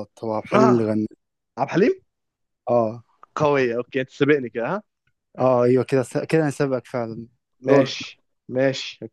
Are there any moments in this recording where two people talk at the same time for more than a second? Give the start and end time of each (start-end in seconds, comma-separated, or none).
none